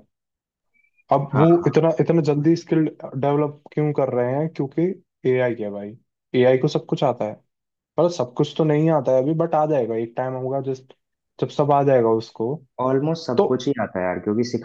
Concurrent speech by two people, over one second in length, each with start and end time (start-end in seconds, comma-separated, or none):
none